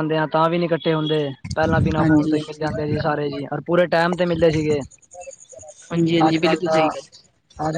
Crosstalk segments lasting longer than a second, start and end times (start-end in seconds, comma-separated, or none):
none